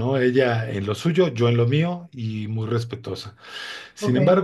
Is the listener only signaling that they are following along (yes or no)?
yes